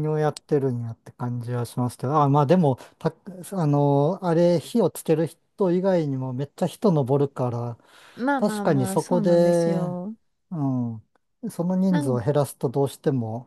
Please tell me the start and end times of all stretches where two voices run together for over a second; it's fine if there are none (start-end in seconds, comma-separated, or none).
8.4-9.9